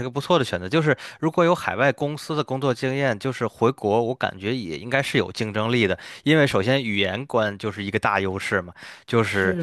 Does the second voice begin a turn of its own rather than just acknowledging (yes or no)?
no